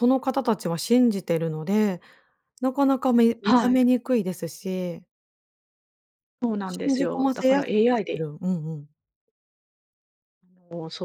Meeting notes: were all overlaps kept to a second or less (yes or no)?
no